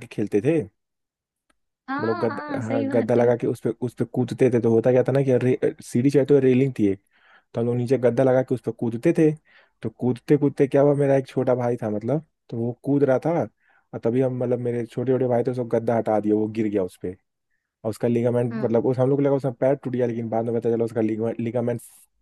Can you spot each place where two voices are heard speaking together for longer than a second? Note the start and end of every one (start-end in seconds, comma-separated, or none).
2.0-3.3